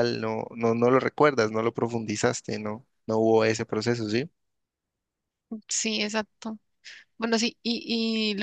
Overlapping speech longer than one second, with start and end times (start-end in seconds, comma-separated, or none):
none